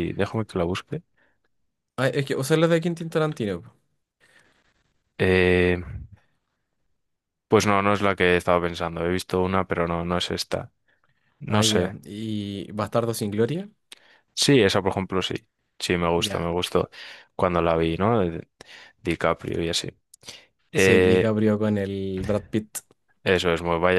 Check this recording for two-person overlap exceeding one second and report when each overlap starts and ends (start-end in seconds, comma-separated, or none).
none